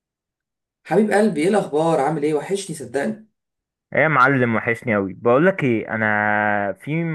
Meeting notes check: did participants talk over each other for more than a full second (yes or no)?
no